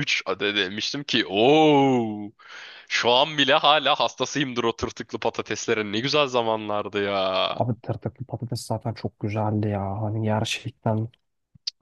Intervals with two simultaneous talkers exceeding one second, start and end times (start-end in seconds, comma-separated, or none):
none